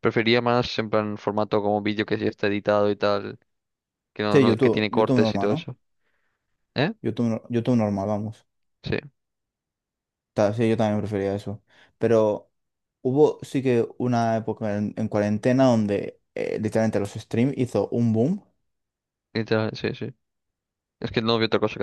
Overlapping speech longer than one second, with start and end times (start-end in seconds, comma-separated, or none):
4.3-5.7